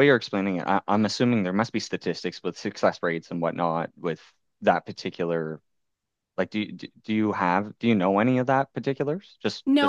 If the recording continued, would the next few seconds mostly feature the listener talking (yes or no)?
yes